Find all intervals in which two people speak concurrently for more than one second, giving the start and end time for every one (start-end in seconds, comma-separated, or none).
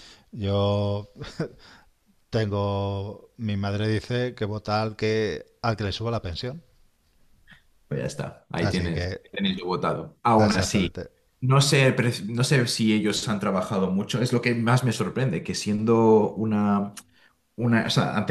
none